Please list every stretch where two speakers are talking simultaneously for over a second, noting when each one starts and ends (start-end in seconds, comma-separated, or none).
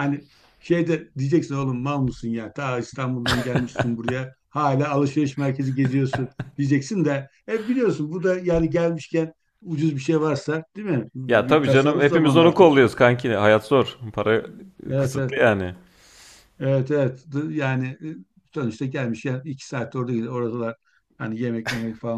11.3-12.7